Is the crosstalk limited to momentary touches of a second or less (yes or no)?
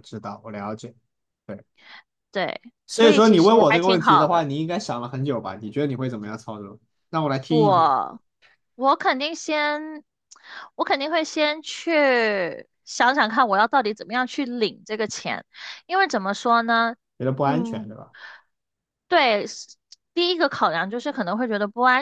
no